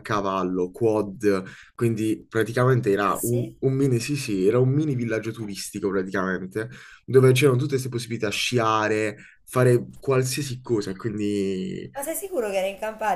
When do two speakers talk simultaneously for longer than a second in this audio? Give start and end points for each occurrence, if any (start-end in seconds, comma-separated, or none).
none